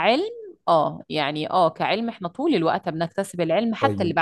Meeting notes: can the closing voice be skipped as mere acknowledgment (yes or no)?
no